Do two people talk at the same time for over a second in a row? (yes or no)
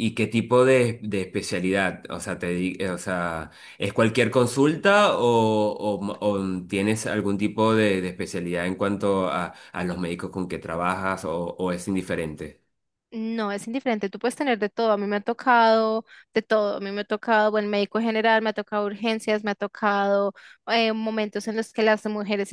no